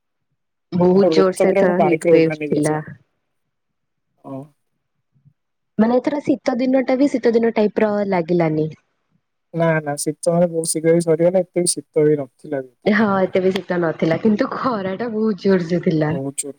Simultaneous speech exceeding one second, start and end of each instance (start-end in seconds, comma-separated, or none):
1.0-2.7